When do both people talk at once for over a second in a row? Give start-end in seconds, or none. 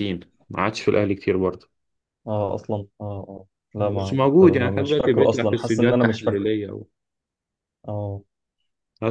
3.8-6.5